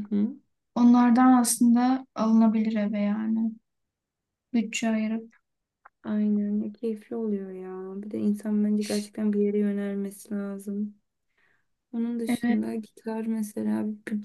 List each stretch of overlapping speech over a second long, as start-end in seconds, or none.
none